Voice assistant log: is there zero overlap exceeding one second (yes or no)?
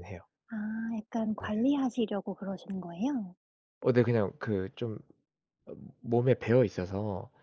yes